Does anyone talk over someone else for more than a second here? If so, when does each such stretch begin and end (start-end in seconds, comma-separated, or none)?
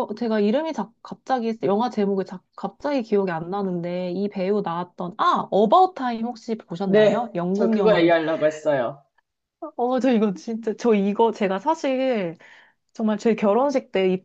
6.8-8.2